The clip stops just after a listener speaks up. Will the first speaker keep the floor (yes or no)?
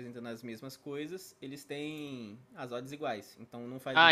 no